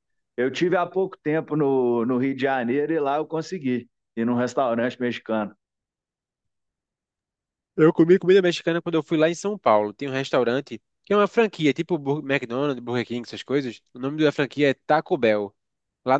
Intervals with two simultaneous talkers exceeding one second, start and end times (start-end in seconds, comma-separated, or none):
none